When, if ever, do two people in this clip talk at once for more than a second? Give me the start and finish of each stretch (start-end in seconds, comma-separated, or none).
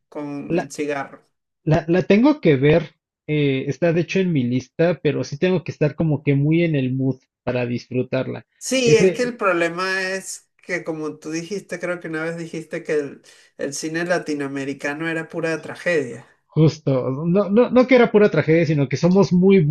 none